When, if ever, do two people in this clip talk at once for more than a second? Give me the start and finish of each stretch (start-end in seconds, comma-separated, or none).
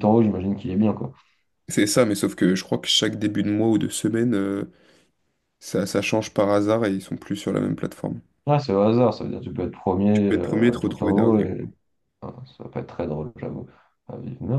10.1-11.7